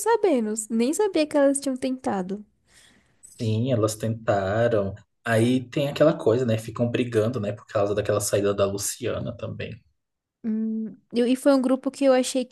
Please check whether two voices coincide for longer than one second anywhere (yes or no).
no